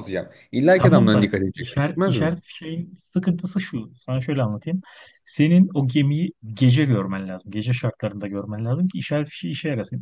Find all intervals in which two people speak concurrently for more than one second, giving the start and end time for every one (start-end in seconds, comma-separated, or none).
0.7-2.3